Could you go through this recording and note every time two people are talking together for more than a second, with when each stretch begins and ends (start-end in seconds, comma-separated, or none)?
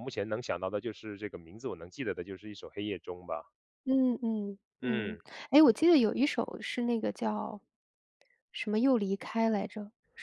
none